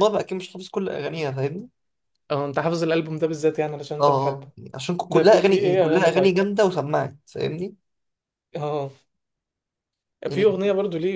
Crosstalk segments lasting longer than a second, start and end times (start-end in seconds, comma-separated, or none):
5.1-6.4